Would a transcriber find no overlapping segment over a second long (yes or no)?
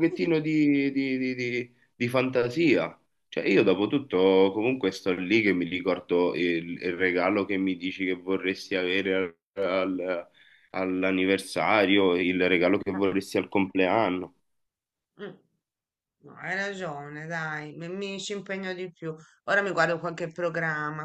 yes